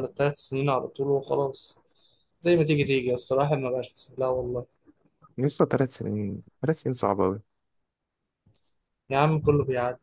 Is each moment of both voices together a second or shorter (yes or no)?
yes